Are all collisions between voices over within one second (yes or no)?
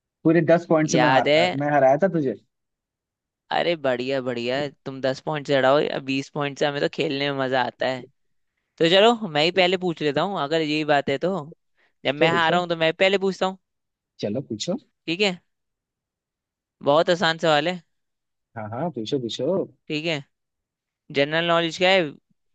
yes